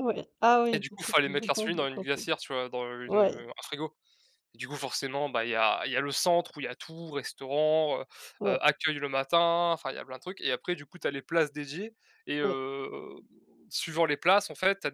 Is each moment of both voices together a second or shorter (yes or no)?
no